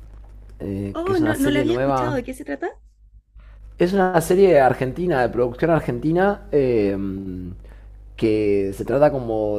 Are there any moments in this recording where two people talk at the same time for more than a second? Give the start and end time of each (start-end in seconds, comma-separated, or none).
0.9-2.2